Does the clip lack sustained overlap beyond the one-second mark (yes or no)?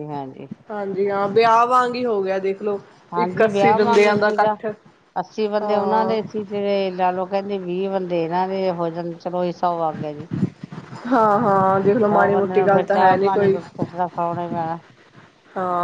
no